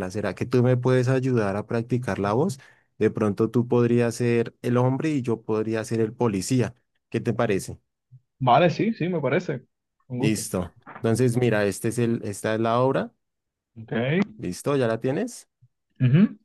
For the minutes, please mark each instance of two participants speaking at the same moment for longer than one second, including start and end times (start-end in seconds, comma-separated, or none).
none